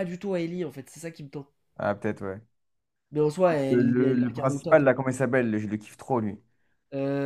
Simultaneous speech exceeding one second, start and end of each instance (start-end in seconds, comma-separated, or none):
3.7-4.9